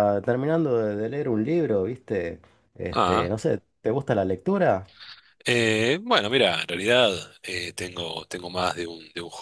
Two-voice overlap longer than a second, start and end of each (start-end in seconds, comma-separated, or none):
none